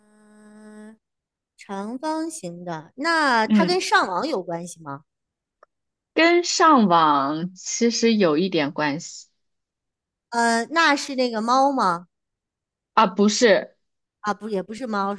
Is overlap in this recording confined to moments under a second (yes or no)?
yes